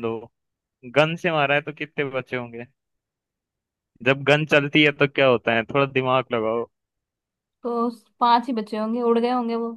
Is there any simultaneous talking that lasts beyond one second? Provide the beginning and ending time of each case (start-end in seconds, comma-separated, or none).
none